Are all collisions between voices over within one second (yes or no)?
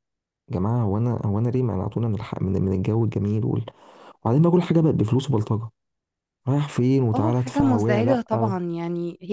no